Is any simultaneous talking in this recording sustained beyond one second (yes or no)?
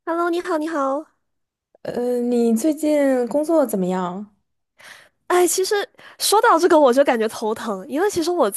no